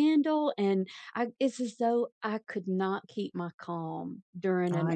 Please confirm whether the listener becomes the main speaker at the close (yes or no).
no